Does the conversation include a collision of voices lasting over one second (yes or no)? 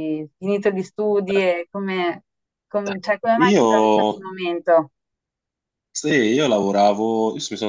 no